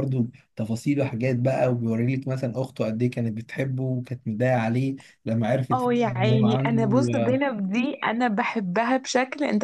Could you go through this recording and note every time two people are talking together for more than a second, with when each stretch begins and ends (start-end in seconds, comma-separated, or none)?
5.7-7.4